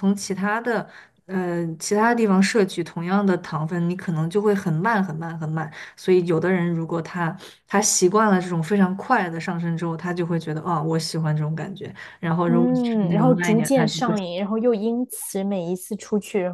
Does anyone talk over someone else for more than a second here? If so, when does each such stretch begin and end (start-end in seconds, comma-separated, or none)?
12.4-14.2